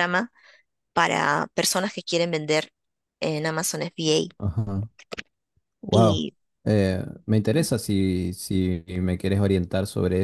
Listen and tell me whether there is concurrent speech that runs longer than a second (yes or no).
no